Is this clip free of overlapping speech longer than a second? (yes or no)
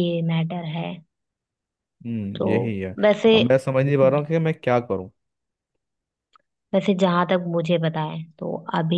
yes